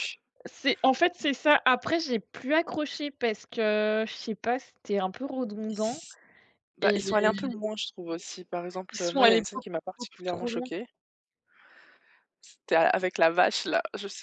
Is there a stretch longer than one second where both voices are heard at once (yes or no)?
yes